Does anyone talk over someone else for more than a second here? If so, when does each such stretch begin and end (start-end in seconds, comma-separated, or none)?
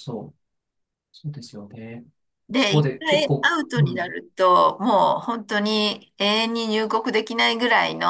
2.5-4.1